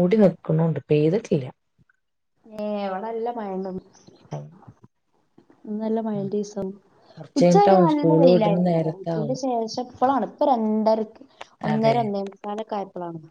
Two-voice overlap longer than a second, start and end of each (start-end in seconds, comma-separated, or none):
7.4-9.3